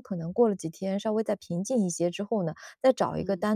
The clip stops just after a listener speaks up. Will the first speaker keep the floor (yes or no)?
yes